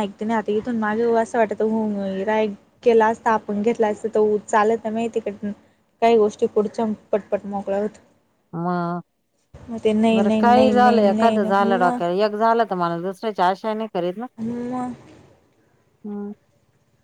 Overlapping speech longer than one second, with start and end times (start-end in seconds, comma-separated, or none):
10.1-12.0